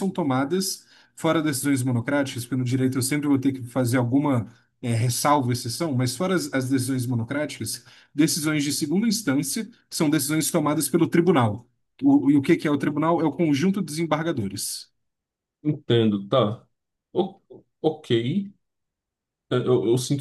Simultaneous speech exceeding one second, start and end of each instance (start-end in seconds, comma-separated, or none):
none